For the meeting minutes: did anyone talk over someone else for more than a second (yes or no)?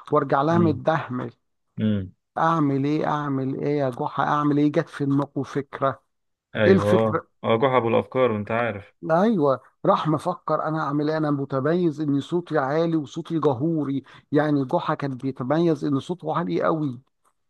no